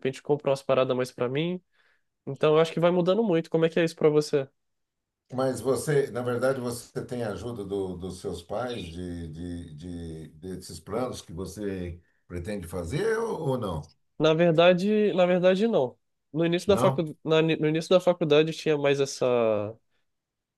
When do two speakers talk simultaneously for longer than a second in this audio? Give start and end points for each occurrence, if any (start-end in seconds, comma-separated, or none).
none